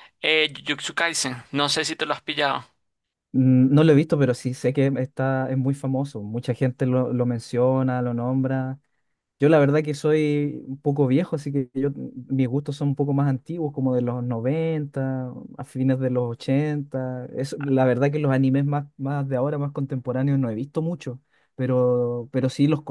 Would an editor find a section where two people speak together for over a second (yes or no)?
no